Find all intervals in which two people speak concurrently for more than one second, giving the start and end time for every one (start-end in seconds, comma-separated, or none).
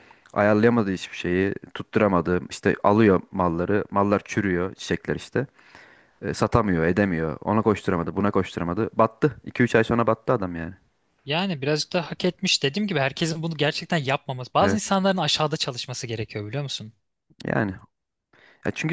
none